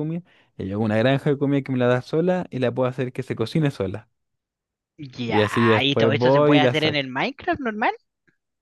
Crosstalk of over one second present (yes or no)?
yes